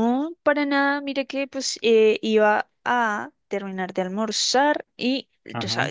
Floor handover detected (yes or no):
no